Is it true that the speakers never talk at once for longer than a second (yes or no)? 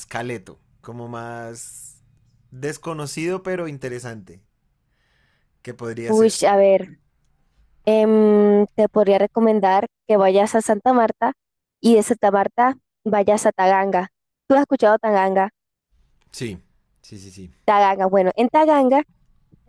yes